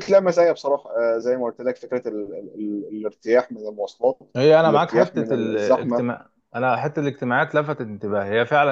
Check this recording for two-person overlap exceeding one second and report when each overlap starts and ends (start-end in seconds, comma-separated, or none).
4.6-6.0